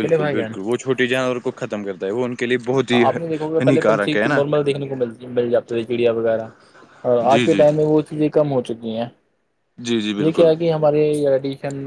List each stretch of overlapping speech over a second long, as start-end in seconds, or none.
2.9-4.4